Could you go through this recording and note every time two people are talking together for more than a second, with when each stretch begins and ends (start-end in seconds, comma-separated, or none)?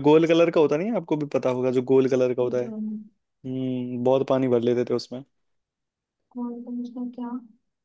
none